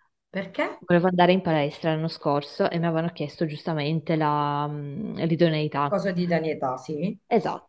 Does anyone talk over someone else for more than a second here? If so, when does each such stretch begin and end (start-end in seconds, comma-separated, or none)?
none